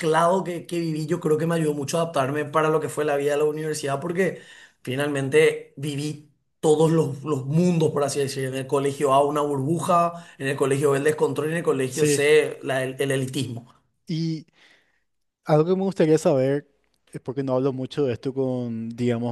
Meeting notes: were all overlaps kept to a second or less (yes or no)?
yes